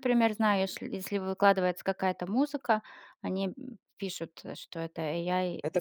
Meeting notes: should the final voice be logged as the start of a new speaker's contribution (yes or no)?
yes